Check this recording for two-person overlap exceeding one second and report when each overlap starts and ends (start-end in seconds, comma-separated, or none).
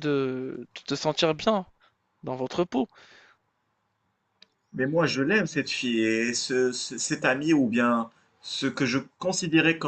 none